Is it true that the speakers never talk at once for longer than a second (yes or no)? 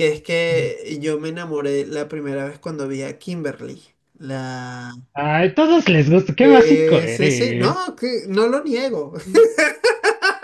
no